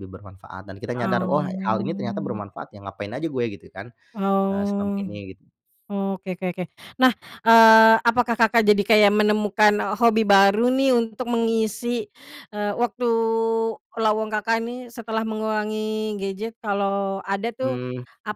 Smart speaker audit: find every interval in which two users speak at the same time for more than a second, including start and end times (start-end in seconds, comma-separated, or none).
1.0-2.4